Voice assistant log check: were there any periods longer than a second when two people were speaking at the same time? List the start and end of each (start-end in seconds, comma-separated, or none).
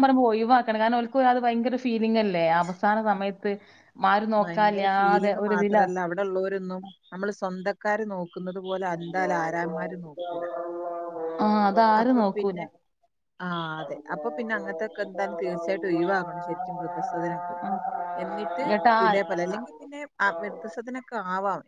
4.4-5.8